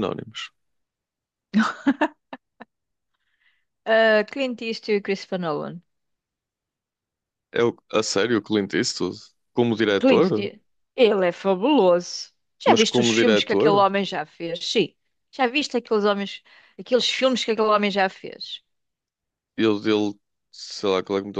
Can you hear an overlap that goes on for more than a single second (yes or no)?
yes